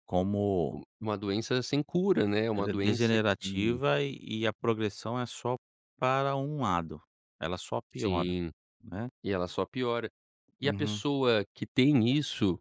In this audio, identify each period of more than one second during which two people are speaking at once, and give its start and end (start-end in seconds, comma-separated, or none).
2.5-3.8